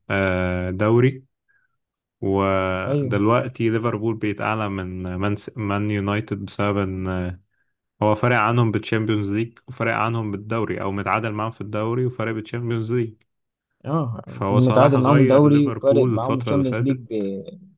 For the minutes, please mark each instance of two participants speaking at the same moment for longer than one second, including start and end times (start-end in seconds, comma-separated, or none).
14.3-17.2